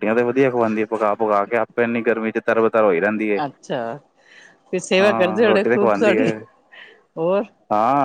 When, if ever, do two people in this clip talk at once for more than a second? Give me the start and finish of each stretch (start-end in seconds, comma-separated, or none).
5.0-6.3